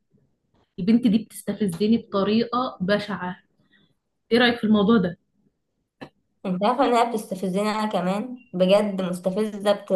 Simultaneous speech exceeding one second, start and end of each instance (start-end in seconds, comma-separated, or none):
none